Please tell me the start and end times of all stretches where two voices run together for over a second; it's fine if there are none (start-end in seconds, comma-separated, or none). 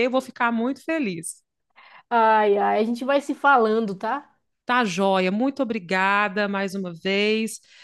none